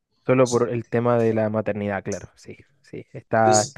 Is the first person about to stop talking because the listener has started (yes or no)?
no